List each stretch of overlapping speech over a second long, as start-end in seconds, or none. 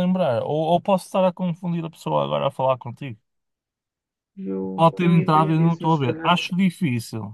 4.8-6.4